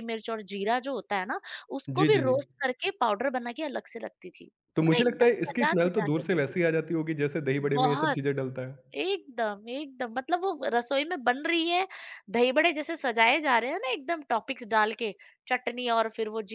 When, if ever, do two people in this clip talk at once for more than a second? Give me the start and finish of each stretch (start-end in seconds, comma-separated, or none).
4.8-6.7